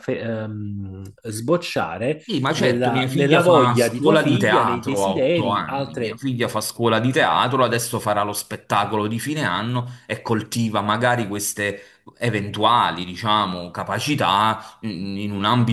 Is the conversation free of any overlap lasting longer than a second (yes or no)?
no